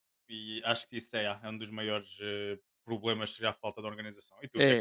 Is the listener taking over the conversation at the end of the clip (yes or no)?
yes